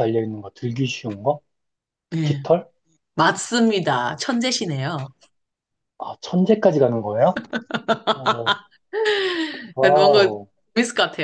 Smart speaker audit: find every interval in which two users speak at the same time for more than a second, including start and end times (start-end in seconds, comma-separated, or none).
none